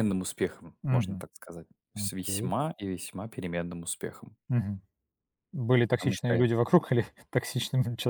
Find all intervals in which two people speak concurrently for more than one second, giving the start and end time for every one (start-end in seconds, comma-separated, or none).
none